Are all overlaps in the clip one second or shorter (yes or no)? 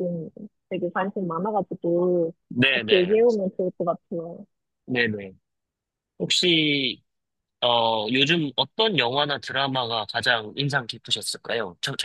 yes